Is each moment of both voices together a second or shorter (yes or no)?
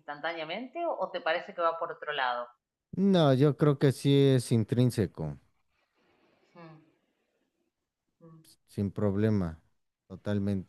yes